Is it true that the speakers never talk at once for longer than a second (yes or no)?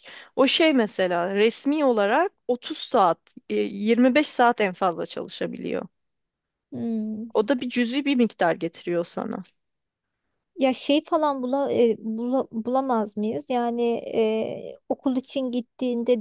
yes